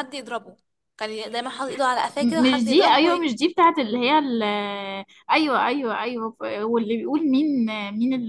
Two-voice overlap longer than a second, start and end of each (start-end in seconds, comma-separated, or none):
2.0-3.3